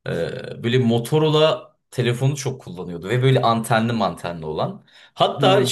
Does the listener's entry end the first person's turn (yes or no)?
no